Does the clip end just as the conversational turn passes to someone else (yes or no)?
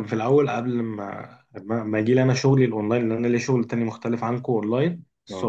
no